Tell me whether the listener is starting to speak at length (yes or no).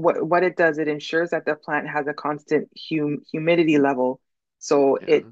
no